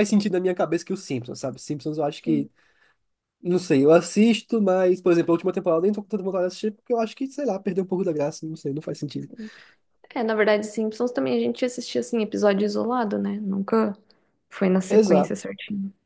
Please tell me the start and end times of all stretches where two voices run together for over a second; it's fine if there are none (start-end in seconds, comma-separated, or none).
none